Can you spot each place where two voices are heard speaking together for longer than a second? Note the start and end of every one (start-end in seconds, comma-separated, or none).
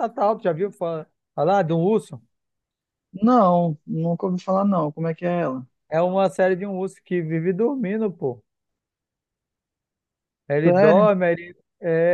none